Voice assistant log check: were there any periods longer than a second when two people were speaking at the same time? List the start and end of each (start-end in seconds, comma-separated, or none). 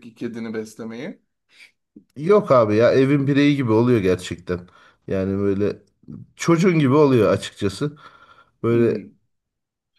none